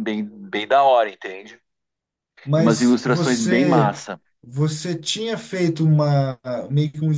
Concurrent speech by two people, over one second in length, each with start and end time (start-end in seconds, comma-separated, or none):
2.6-4.0